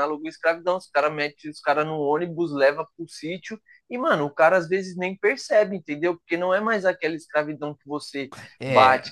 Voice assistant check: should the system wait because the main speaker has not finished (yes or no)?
yes